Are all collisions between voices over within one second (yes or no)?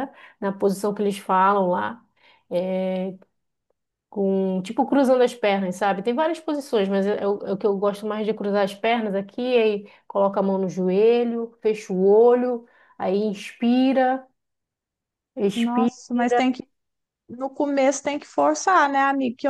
yes